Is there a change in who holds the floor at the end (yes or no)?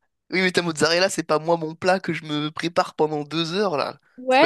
yes